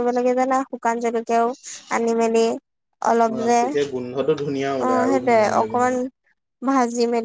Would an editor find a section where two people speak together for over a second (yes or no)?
yes